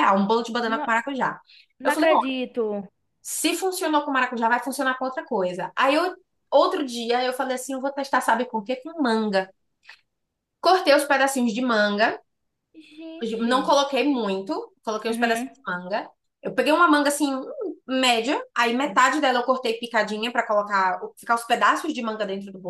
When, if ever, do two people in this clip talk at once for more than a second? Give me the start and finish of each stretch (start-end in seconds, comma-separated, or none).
none